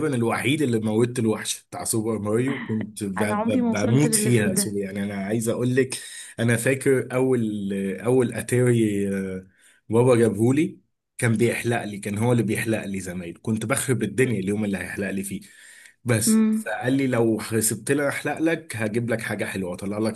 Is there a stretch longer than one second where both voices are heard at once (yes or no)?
yes